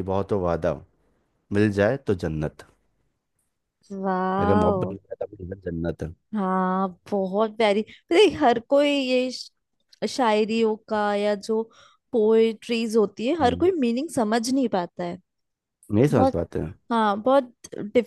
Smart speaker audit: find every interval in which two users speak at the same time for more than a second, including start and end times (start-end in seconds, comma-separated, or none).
none